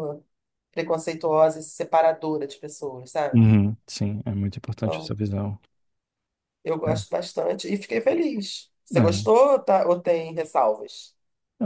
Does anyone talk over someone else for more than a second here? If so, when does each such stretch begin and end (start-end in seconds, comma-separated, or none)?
none